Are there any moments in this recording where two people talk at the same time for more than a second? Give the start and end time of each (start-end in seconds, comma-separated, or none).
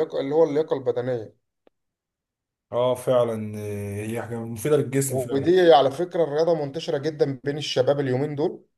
none